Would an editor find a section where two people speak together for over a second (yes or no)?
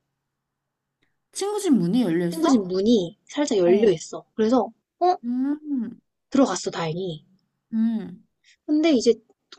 no